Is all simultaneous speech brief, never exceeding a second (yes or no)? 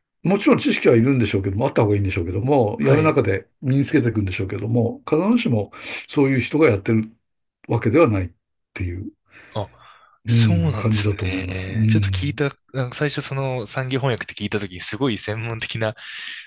no